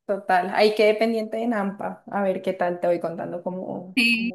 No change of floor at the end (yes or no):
no